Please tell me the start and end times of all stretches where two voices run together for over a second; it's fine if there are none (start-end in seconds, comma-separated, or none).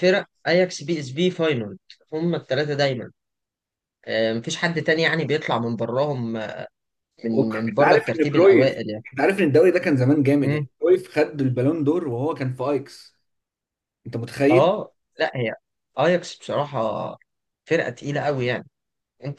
7.3-9.0